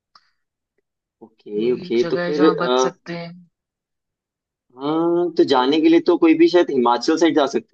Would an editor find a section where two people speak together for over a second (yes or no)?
yes